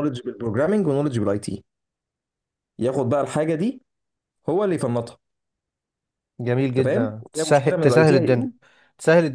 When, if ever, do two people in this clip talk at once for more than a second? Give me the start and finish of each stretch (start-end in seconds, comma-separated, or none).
6.7-8.5